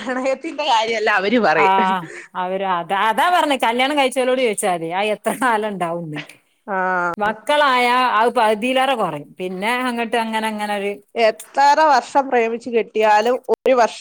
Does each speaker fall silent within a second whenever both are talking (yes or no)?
yes